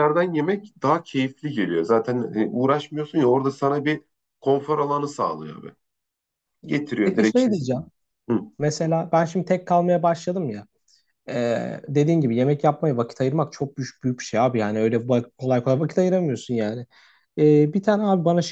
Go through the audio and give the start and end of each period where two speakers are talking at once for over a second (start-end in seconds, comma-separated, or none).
none